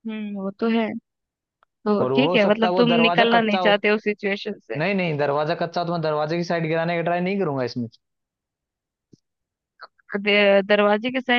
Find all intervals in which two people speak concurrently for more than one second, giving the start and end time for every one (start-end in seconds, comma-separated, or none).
2.0-3.8